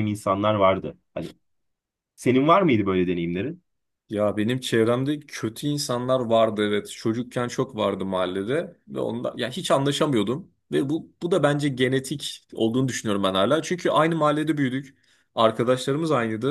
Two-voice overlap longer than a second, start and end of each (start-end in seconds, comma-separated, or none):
none